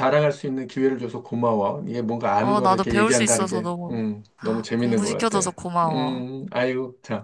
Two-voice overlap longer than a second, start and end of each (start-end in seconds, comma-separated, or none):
2.4-4.0, 4.8-6.2